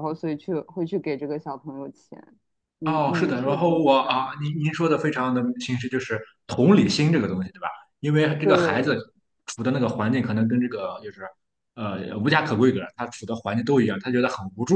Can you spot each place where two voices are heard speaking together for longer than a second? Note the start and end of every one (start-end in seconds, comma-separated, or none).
2.8-4.2